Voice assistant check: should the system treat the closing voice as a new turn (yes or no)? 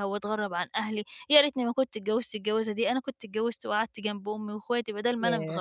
no